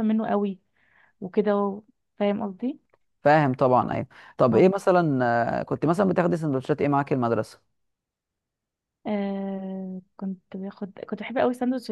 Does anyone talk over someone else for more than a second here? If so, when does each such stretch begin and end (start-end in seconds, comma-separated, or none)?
none